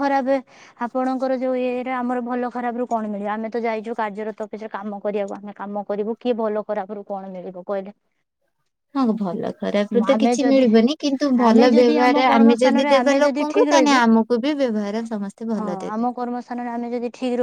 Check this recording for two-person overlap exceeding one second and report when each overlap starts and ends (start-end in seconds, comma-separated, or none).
11.5-14.0